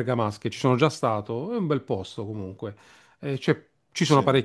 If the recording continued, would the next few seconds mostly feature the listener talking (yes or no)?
no